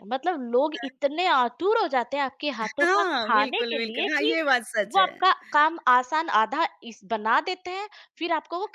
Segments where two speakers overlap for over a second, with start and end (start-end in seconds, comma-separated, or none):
2.6-4.3